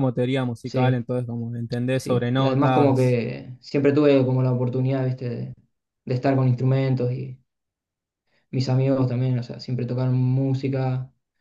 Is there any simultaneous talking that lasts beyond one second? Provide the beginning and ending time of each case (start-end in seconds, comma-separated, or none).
1.9-3.2